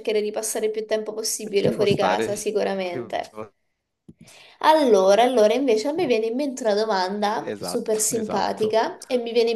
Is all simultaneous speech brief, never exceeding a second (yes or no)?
no